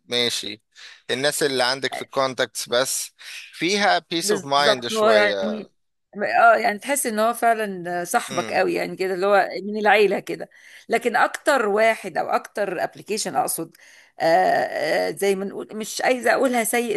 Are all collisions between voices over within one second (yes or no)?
no